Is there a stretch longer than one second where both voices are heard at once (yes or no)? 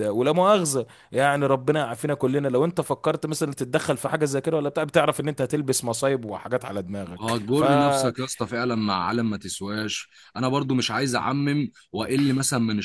no